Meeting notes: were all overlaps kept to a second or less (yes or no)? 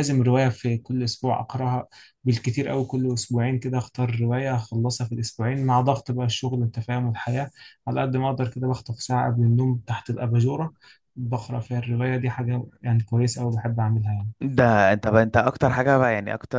yes